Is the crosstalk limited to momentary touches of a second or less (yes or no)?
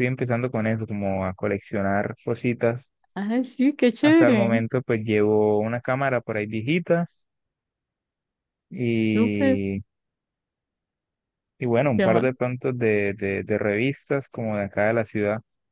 yes